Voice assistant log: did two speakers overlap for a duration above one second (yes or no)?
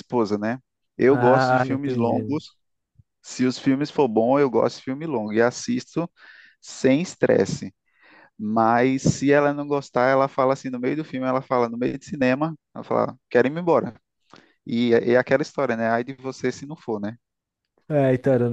yes